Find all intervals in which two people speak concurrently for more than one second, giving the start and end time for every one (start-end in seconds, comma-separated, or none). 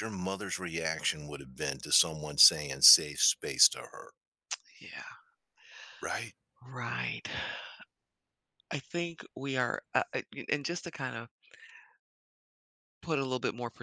none